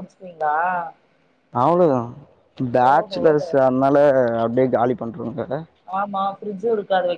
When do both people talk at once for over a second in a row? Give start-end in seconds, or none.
none